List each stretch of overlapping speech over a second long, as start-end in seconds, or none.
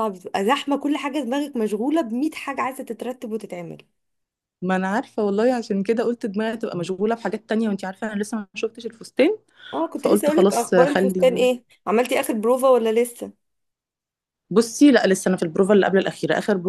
9.9-11.5